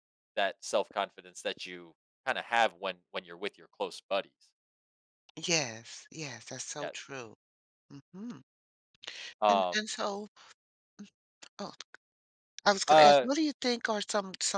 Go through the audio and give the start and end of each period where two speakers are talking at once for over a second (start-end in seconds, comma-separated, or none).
none